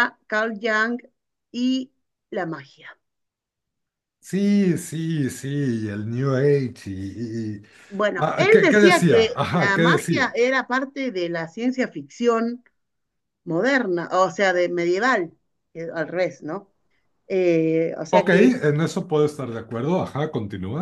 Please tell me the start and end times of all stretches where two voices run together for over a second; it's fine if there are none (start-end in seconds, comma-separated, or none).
8.2-10.3